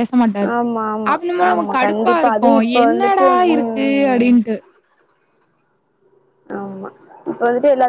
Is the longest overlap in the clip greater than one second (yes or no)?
yes